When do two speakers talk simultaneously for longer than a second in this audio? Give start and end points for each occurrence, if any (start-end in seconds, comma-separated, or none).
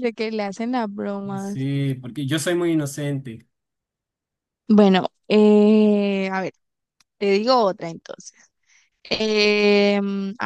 none